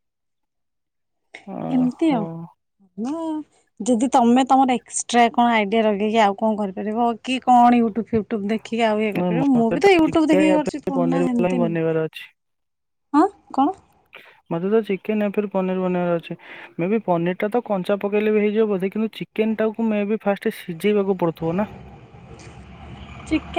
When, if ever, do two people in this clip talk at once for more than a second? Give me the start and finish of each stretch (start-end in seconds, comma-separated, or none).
9.2-11.8